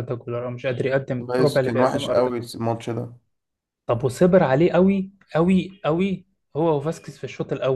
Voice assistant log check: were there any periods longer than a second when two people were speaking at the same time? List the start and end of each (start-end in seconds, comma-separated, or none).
1.2-2.5